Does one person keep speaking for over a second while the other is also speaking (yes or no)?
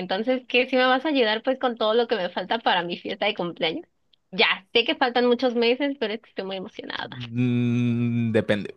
no